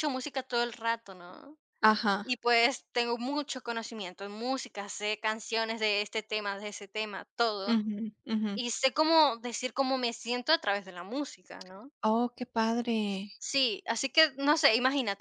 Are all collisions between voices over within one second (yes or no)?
yes